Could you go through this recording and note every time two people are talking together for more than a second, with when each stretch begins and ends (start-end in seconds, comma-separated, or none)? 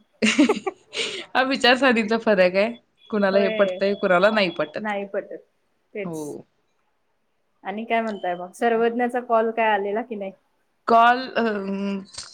none